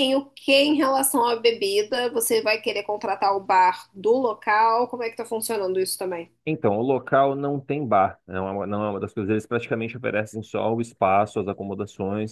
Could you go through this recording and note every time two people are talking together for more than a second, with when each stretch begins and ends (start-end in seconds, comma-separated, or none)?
none